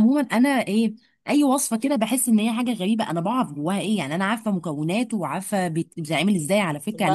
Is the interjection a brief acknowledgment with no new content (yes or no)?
no